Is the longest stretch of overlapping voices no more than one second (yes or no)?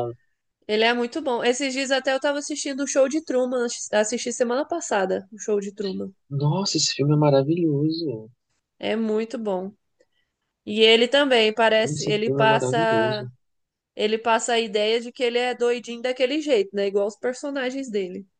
no